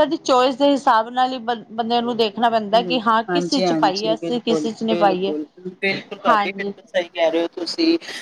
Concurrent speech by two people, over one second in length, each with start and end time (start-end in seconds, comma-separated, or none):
3.3-5.3